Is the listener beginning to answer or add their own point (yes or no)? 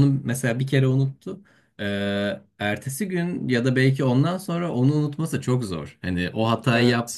no